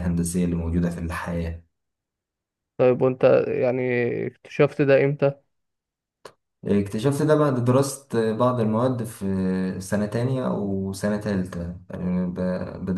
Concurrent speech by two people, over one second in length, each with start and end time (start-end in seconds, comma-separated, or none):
none